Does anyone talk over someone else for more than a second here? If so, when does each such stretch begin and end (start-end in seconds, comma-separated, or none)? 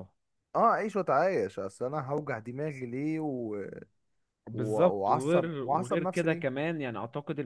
4.5-6.5